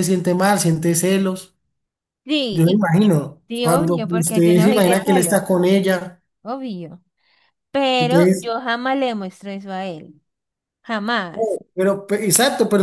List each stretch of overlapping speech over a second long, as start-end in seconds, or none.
3.5-5.4